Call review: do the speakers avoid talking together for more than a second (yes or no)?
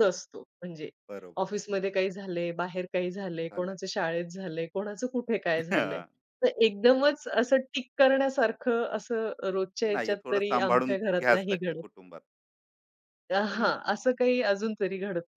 no